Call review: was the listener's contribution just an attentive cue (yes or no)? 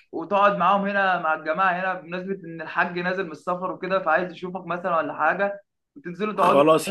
no